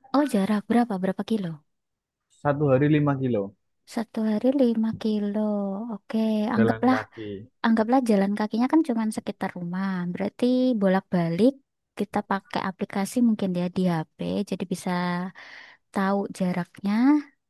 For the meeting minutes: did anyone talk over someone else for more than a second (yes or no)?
no